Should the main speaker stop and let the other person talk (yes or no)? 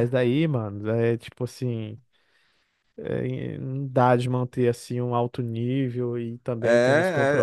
yes